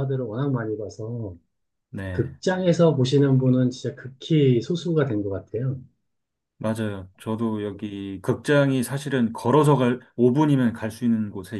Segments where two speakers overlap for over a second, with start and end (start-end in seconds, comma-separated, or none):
none